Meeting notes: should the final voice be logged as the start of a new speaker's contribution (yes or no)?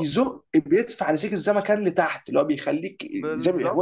no